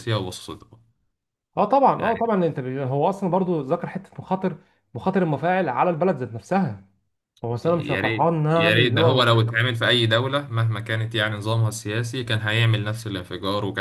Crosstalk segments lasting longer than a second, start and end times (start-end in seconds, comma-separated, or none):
7.6-9.3